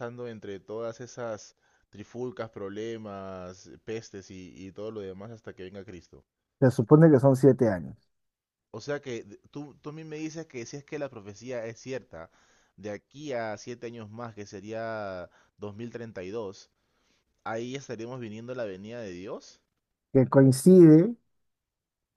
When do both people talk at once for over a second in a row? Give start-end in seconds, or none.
none